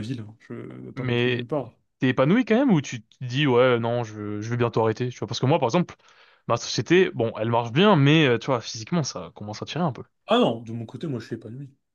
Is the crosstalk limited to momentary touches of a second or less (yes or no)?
yes